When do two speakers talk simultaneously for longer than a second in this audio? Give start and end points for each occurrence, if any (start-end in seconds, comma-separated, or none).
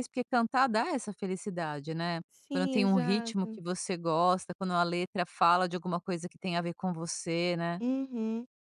2.3-3.6